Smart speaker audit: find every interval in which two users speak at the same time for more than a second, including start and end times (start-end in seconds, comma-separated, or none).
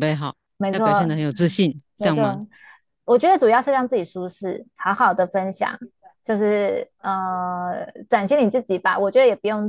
none